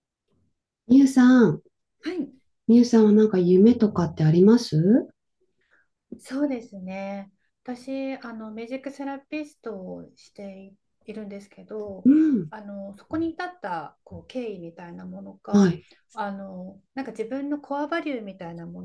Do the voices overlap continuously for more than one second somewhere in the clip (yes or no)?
no